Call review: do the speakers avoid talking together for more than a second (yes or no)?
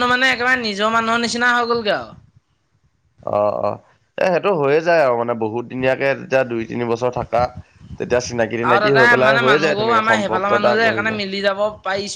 no